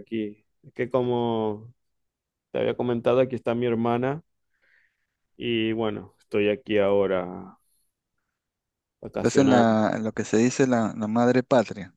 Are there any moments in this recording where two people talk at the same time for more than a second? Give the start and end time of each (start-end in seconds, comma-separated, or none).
none